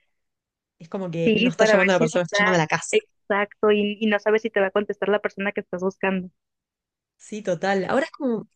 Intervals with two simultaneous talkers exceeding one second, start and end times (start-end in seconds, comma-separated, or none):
1.2-3.0